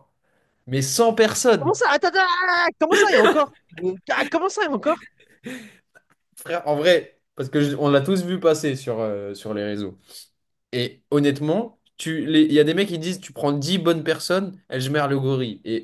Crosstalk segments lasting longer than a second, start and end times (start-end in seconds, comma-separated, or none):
none